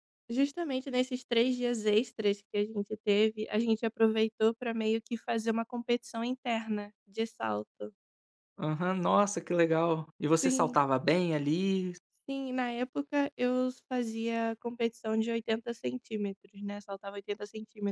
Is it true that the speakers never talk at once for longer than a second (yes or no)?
yes